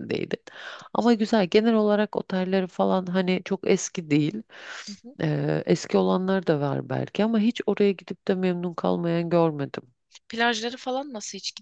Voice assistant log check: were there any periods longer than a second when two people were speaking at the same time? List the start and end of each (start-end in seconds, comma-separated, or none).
none